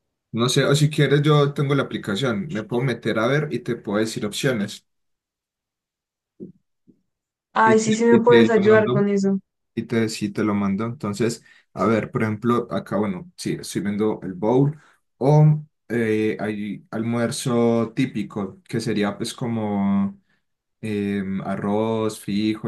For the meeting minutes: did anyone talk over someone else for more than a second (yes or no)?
yes